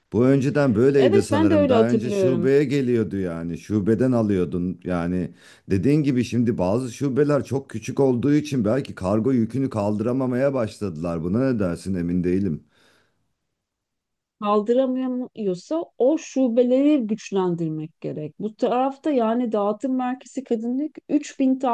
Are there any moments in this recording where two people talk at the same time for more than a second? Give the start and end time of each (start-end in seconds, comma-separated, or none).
1.0-2.5